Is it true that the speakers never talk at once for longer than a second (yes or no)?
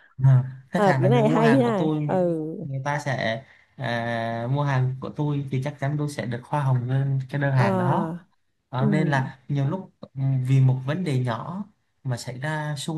no